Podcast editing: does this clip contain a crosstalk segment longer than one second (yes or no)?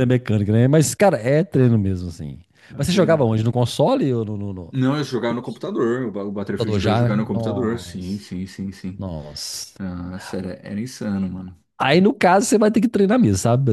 yes